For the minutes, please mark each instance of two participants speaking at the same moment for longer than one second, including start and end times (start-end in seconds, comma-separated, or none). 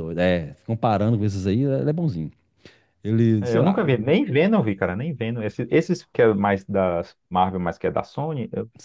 none